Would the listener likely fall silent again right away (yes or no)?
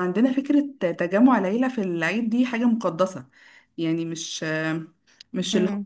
yes